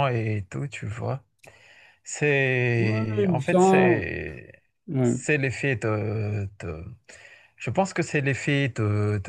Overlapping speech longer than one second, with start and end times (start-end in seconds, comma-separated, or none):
2.8-4.1